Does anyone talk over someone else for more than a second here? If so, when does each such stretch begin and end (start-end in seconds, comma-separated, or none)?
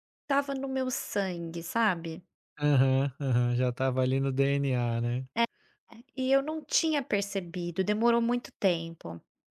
none